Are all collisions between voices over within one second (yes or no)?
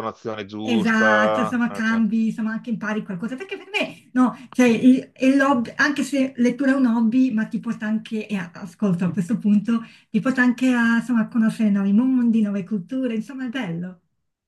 no